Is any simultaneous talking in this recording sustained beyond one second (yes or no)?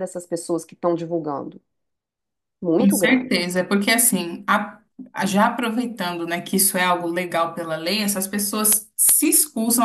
no